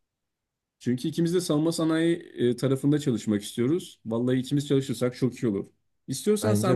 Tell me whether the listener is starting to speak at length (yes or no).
no